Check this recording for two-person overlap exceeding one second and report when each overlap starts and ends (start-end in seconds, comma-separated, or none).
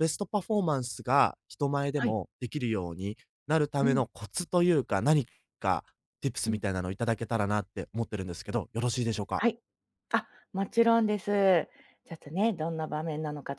none